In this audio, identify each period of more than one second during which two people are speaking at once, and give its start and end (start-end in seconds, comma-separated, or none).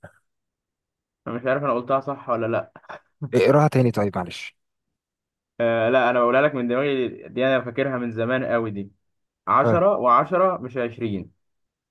none